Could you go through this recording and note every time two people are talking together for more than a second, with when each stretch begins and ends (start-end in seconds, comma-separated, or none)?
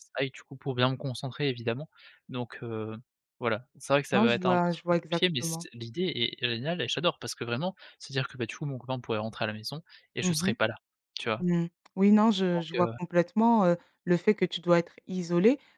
4.1-5.7